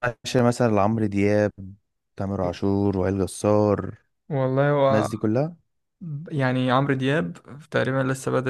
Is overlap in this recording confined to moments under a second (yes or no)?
yes